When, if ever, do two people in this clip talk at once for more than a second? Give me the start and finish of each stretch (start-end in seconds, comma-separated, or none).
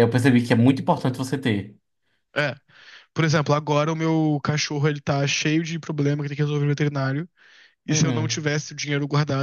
none